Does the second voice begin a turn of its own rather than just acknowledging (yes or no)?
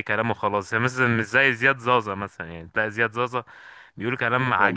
no